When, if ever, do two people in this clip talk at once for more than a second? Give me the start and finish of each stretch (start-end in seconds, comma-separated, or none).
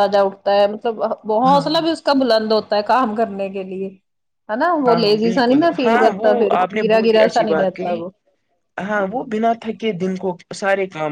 4.9-8.0